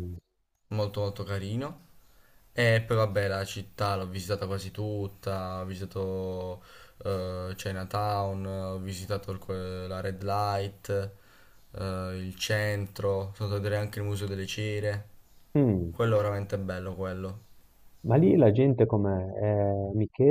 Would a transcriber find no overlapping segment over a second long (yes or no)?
yes